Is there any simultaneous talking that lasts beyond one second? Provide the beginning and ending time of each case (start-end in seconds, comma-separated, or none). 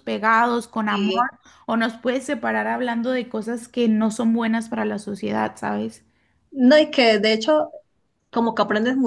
none